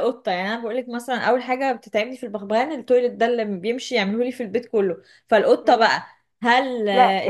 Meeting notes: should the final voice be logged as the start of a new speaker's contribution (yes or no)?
yes